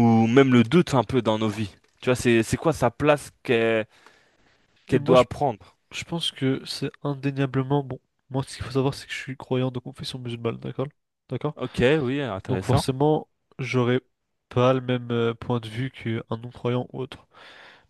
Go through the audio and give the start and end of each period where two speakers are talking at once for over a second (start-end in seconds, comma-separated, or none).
none